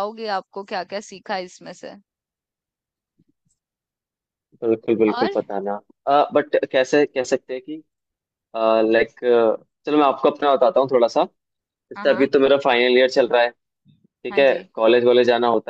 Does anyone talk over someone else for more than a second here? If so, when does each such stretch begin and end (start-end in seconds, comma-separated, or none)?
none